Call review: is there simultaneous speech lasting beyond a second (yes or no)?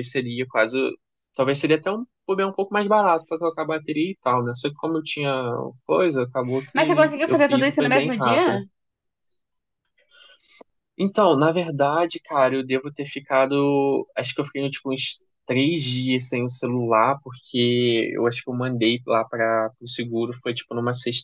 yes